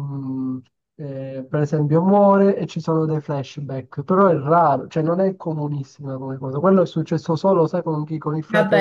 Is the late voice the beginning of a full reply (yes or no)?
yes